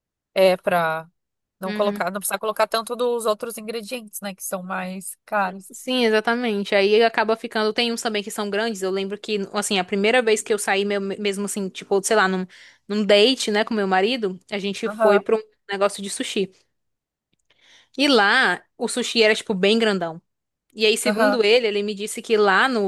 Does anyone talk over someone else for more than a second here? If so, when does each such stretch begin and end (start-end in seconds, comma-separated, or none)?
none